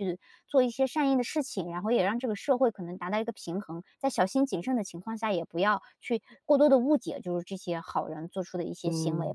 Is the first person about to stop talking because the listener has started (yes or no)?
yes